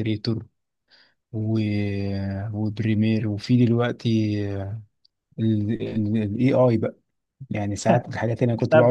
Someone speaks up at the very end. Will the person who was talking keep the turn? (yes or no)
no